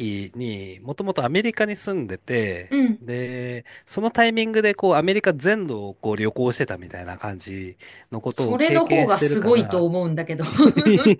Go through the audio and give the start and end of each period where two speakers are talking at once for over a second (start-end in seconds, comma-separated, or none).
8.3-9.8